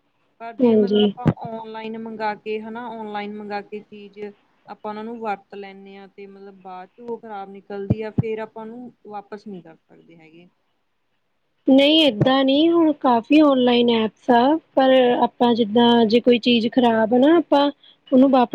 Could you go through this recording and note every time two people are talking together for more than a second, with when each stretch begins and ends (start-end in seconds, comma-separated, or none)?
none